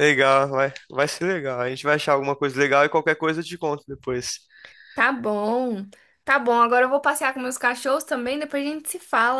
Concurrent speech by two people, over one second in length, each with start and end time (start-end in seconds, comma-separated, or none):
none